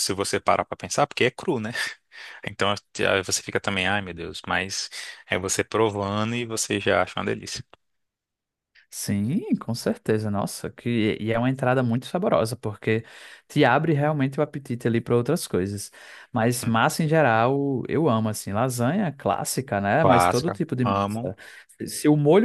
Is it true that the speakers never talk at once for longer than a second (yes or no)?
no